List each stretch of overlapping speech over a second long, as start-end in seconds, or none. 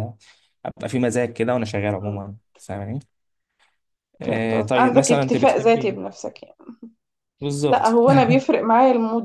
4.2-6.0